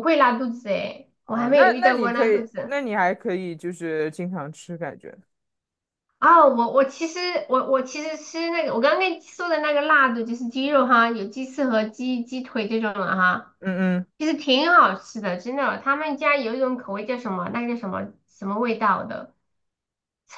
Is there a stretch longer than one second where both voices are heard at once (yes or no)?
yes